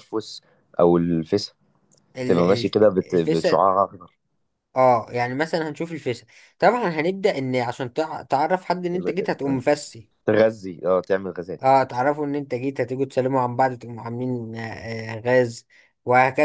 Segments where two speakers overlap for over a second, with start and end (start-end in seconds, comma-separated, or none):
2.3-3.6